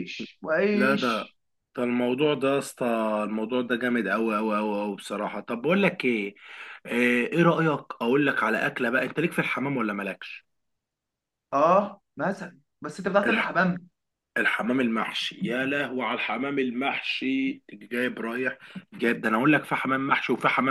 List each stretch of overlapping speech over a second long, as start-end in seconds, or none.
none